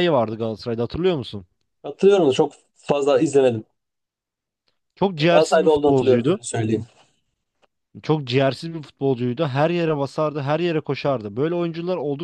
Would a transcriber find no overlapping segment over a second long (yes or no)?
no